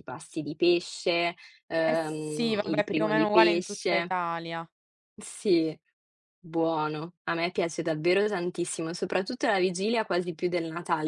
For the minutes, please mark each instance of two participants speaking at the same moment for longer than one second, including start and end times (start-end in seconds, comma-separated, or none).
1.9-4.1